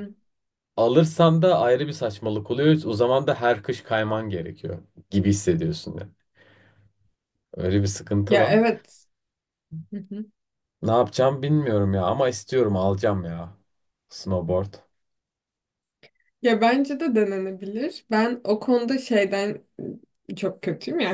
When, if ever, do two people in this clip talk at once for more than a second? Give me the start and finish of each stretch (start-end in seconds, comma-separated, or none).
none